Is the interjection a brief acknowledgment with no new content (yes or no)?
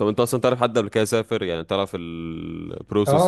no